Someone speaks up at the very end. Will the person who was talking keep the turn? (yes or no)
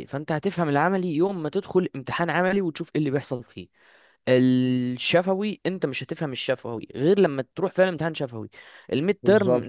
yes